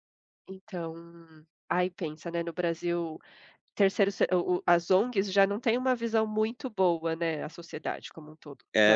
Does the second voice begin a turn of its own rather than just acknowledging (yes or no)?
yes